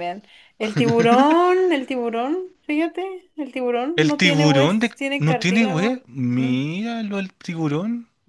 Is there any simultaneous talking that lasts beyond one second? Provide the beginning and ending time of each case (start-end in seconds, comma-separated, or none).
4.0-6.6